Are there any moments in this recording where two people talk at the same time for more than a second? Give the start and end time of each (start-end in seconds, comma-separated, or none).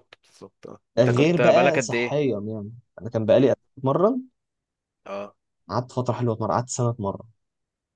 1.0-2.2